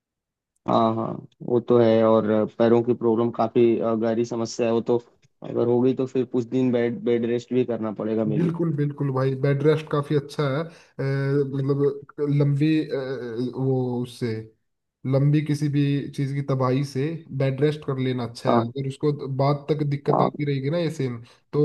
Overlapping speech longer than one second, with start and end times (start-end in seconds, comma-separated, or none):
none